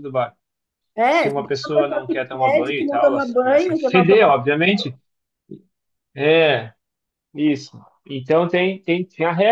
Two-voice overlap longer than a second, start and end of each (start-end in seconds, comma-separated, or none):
1.1-4.3